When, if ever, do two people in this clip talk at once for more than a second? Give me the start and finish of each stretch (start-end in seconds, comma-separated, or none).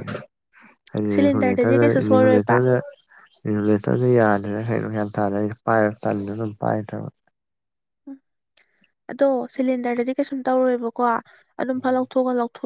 1.1-2.6